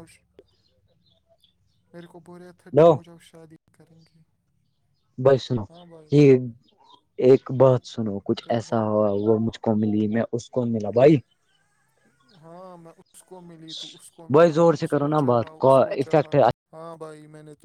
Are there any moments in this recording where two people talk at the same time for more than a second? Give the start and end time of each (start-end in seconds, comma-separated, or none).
14.3-16.4